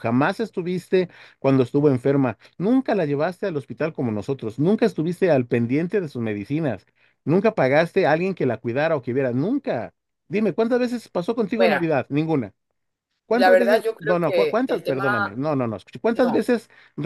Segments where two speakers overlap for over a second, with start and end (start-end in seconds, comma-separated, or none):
13.3-15.4